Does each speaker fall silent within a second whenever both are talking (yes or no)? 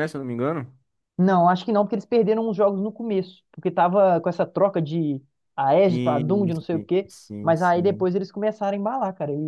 no